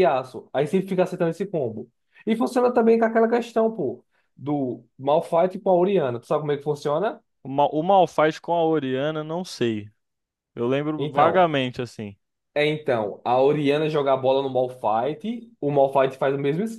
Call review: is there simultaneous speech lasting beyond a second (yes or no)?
no